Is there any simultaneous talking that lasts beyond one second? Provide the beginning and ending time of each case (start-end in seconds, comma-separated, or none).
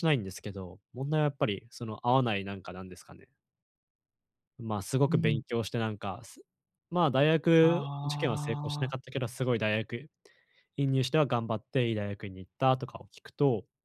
7.6-8.9